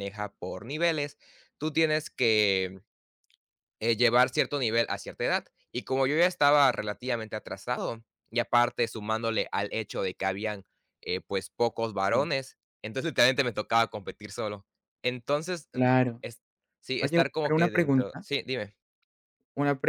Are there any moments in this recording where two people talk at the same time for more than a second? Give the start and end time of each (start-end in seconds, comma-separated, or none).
17.0-18.2